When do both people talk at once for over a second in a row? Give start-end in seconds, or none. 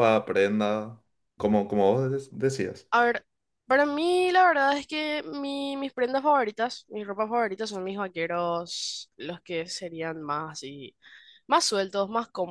none